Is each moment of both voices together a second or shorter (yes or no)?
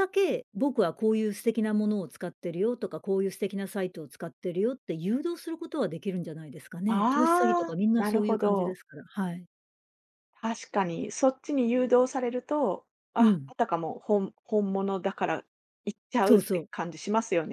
no